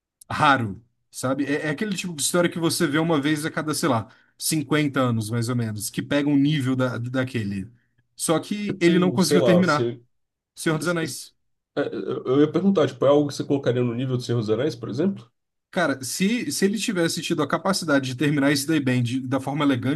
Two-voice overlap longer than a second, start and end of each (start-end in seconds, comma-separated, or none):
8.7-9.9